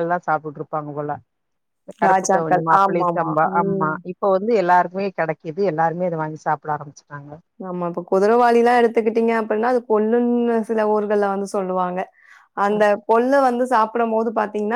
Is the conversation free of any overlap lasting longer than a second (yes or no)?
no